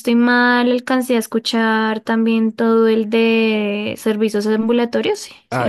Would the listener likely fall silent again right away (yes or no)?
no